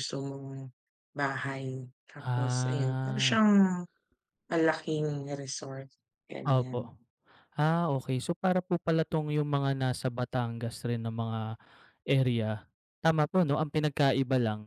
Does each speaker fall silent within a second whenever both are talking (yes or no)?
no